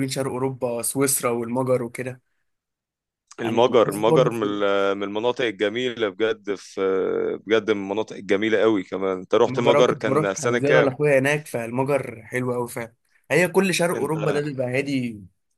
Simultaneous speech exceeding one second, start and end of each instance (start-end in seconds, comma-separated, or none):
3.4-4.6, 9.5-10.9